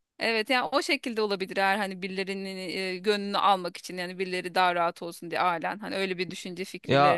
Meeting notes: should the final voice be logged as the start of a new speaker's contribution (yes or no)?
no